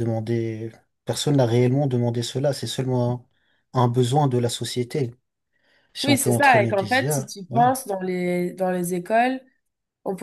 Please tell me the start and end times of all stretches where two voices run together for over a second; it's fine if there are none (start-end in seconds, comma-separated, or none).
6.0-7.6